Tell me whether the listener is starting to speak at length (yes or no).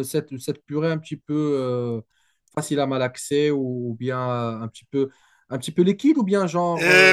yes